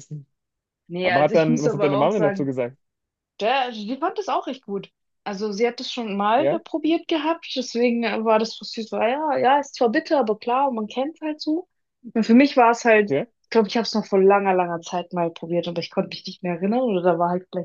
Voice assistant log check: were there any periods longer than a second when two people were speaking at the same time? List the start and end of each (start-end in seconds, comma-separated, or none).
1.0-2.5